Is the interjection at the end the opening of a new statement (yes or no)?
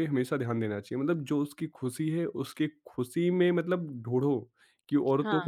no